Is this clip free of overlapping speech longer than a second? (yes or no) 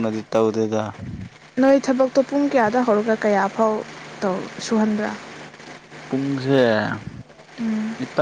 yes